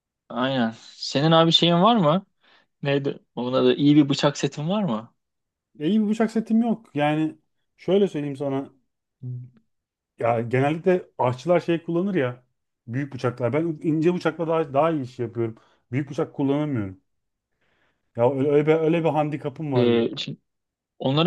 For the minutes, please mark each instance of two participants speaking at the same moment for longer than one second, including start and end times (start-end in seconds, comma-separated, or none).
none